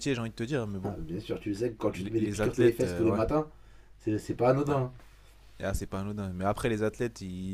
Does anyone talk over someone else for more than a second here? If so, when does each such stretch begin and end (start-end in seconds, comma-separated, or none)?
1.9-3.2